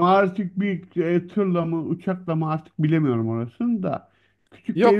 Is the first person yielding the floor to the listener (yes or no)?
yes